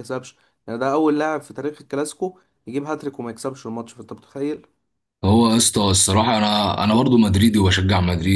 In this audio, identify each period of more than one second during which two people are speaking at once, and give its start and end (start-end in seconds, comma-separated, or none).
none